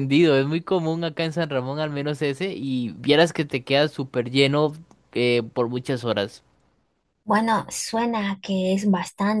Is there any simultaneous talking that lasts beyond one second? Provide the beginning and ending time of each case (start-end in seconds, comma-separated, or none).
none